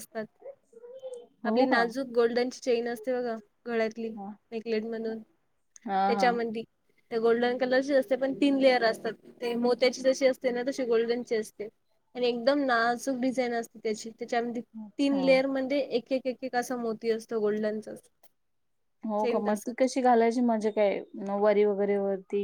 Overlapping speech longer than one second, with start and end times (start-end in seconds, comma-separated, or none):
none